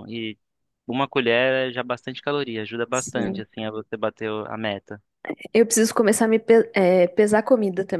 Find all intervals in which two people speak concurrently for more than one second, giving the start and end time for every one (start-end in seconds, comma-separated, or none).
none